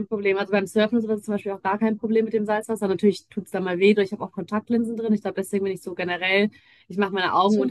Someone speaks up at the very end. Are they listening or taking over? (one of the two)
listening